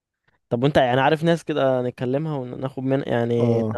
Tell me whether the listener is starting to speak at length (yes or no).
yes